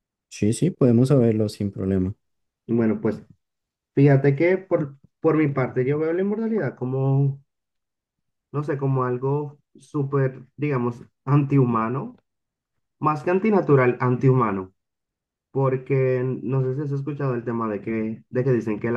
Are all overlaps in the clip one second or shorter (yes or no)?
yes